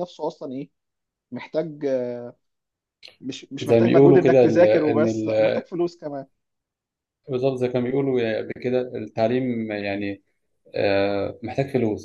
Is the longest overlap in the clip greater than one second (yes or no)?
yes